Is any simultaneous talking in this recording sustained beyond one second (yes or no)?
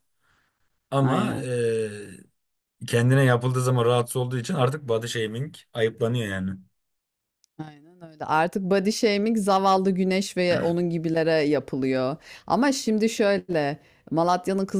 no